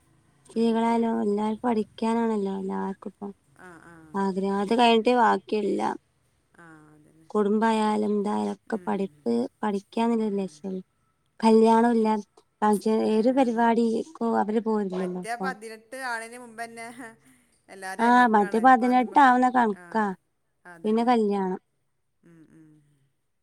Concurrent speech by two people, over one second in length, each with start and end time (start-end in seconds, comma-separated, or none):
none